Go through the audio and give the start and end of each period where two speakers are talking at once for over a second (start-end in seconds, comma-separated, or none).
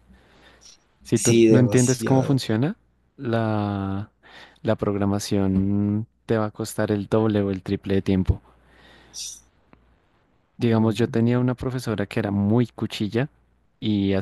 1.1-2.4